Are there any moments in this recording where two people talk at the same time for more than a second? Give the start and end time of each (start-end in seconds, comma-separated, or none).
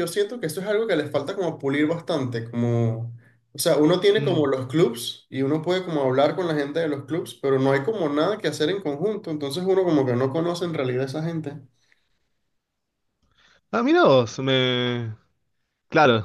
none